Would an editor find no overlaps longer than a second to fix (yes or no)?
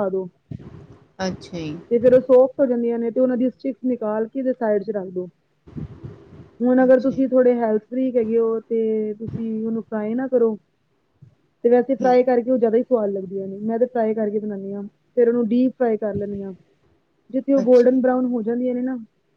yes